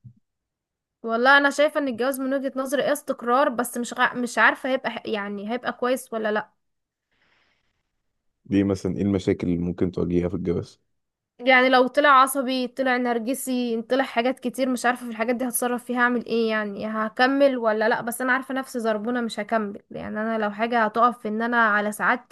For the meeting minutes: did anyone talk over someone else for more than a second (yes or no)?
no